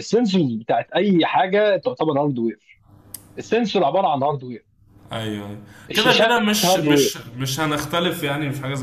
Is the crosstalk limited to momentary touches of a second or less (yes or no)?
no